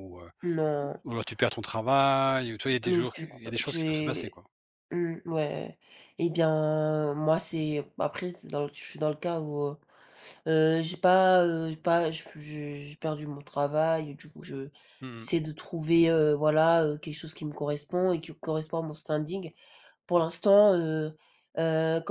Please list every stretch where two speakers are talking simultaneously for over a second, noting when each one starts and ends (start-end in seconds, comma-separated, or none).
2.9-4.4